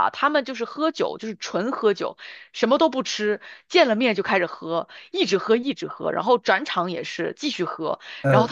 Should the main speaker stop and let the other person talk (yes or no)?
no